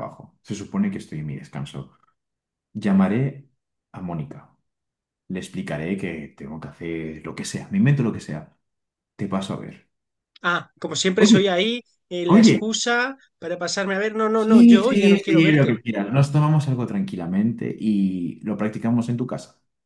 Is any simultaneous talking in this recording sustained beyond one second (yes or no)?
yes